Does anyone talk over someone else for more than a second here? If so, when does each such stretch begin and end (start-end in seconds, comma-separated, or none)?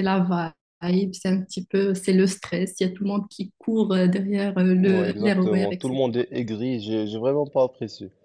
4.7-6.1